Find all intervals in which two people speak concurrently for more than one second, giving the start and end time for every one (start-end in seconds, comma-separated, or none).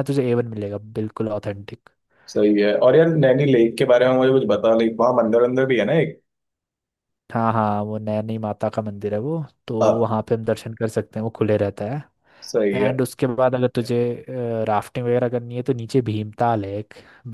none